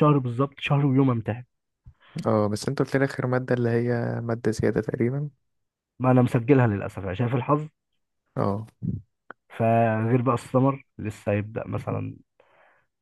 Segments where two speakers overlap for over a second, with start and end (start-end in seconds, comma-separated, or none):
none